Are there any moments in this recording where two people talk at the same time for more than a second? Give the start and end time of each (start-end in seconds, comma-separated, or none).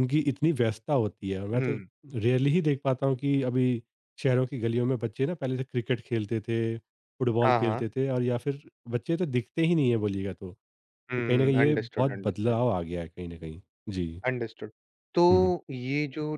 11.2-12.6